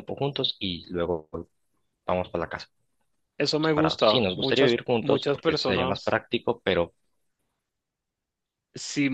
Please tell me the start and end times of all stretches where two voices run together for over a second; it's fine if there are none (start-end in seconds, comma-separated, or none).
3.6-6.1